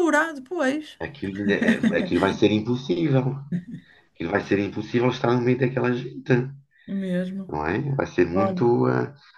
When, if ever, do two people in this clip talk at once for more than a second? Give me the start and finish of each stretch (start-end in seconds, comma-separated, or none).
none